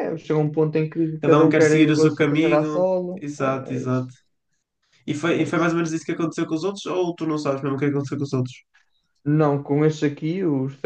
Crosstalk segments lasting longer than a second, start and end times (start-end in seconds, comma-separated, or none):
1.2-4.1